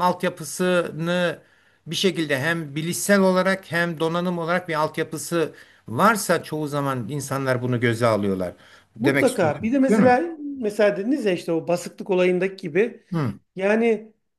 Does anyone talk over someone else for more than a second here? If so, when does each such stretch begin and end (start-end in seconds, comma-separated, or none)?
9.0-10.2